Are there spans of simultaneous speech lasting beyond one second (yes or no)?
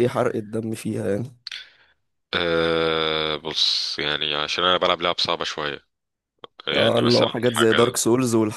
yes